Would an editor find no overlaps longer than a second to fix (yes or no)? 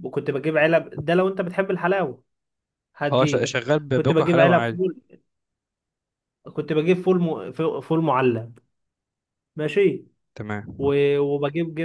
no